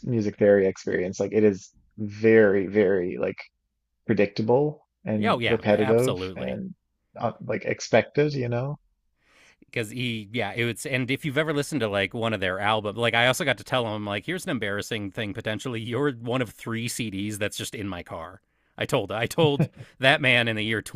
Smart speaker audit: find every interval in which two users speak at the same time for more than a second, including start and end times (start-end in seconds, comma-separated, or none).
5.2-6.6